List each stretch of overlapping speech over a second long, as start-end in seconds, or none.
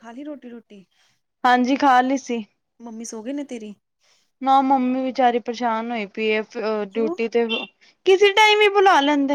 none